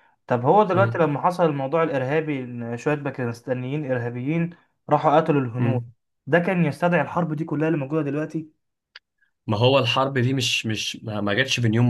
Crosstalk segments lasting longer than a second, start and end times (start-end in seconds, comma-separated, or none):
none